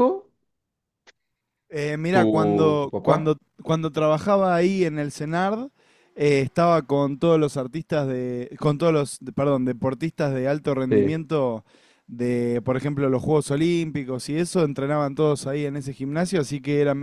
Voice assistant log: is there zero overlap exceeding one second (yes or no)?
no